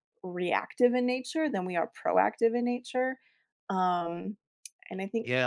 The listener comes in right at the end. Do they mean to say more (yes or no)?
yes